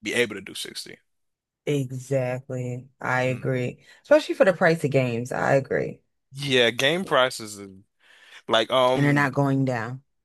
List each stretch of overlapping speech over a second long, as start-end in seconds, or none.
none